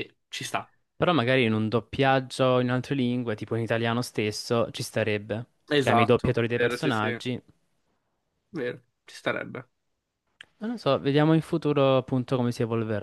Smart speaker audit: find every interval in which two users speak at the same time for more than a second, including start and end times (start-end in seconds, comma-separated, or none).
5.7-7.2